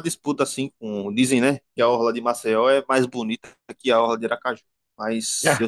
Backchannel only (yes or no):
yes